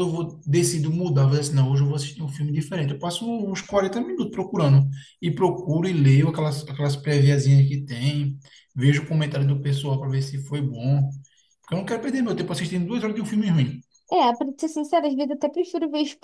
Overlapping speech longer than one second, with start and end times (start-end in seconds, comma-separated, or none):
none